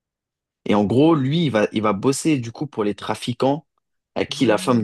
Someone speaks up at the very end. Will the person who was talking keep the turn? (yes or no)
yes